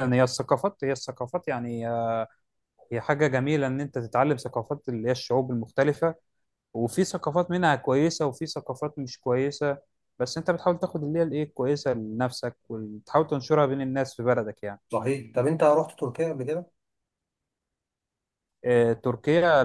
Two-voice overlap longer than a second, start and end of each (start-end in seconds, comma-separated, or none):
none